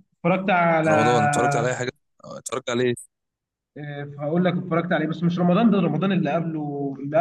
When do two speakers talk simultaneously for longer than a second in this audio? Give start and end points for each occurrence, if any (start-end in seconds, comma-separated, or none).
none